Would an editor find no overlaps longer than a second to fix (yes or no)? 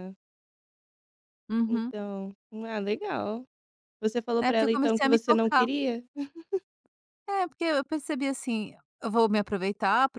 no